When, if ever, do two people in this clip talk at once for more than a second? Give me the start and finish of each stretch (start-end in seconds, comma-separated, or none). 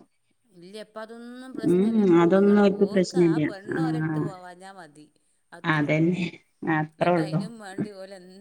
2.2-4.3